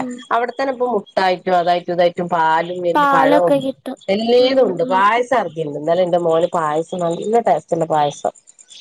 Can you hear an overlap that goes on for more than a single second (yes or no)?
no